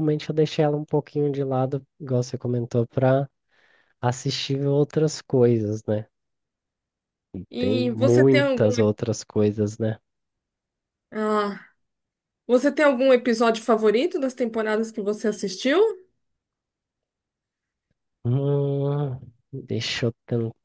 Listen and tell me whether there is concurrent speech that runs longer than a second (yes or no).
yes